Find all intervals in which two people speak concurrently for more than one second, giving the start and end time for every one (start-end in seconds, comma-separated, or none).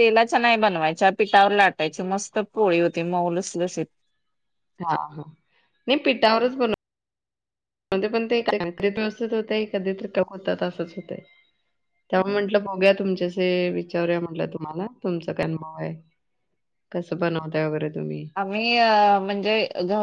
none